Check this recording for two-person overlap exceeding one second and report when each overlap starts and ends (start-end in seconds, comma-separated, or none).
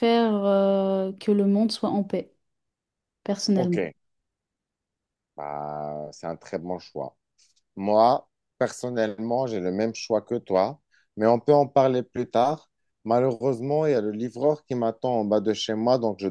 none